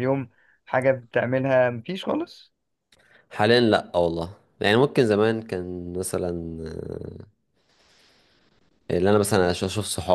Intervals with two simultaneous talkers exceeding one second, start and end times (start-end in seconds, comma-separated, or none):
none